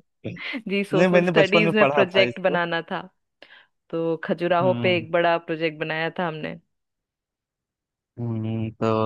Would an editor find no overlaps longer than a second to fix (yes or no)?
no